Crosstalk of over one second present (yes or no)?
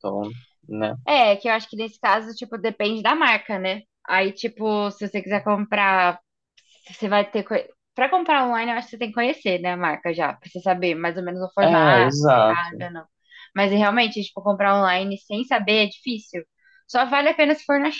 yes